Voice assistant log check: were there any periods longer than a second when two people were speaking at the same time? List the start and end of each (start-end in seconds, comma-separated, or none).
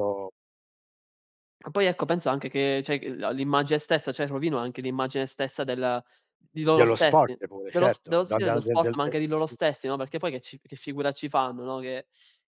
6.7-9.6